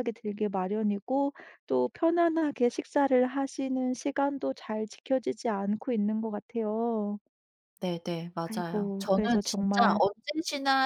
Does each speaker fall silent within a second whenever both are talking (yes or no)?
no